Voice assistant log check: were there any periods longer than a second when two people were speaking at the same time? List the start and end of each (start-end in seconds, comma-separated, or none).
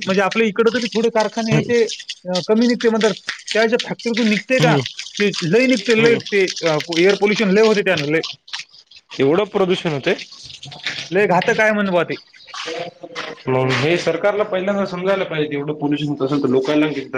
none